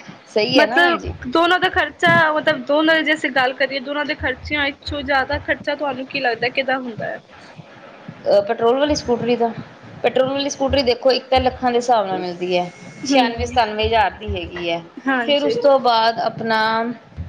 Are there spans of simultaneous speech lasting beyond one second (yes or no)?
no